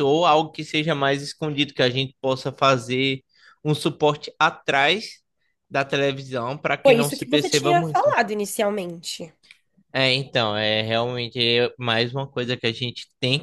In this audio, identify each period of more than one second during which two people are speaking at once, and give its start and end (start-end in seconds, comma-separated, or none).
6.8-8.2